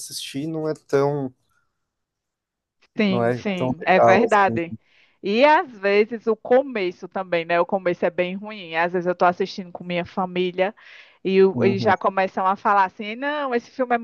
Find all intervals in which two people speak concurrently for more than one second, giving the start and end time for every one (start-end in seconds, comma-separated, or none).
3.1-4.6